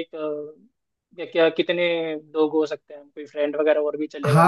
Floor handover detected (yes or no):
yes